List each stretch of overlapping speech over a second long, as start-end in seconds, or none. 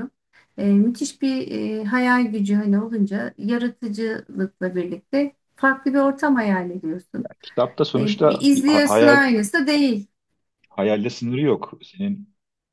8.0-9.2